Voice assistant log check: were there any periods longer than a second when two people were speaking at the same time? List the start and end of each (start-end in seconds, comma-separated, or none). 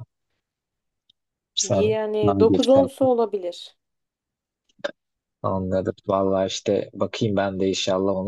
1.6-3.1